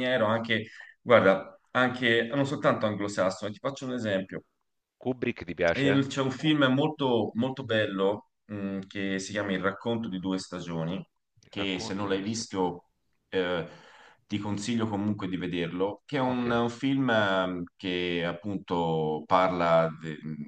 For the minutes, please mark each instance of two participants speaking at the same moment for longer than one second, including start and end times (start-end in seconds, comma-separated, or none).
11.5-12.7